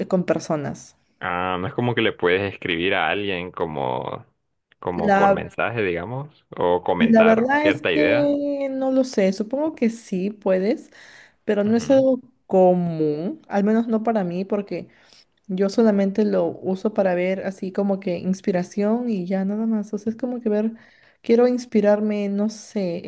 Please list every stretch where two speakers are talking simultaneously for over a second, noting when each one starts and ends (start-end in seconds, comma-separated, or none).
7.0-8.3